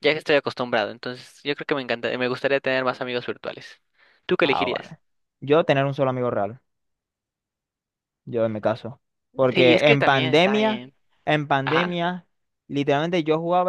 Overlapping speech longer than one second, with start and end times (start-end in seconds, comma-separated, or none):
9.5-10.9